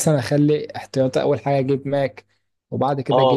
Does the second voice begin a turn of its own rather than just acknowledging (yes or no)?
yes